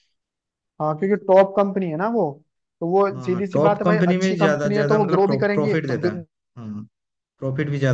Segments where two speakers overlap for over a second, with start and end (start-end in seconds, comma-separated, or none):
3.1-6.2